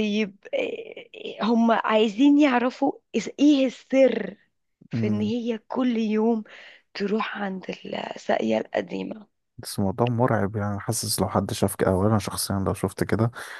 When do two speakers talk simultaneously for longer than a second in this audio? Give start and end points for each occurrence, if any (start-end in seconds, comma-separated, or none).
none